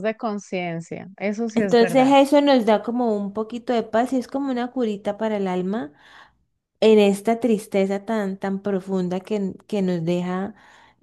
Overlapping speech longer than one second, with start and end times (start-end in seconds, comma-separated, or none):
none